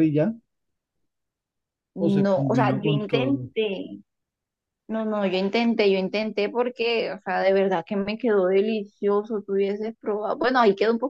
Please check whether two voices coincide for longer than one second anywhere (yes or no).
yes